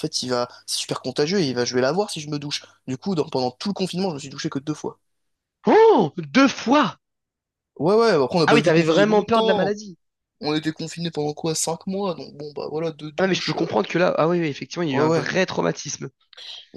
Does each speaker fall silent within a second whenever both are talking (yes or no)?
no